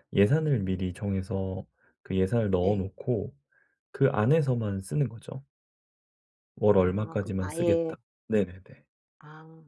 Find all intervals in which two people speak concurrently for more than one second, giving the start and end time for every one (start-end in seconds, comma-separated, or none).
6.7-8.0